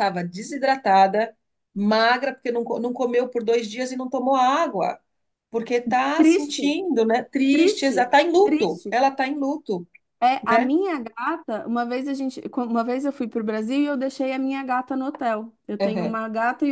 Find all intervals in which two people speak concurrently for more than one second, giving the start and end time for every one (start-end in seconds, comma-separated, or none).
7.5-8.9